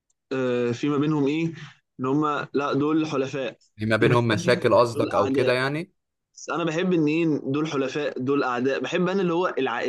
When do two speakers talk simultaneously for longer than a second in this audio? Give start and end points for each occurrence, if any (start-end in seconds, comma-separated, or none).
4.0-5.6